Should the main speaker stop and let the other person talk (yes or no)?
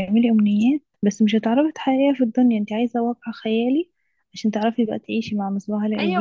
yes